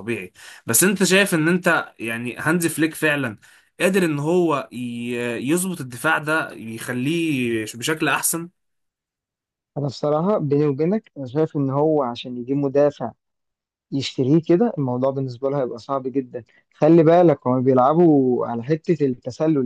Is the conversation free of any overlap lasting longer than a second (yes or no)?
yes